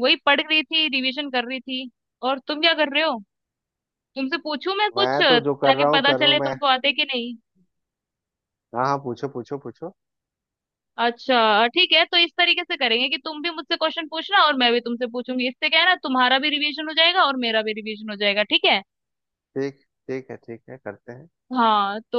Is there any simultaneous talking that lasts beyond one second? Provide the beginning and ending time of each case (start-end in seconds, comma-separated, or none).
5.0-6.5